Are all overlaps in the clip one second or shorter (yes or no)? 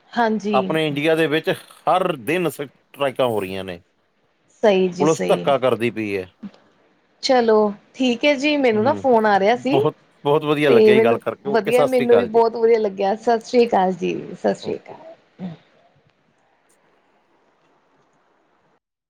no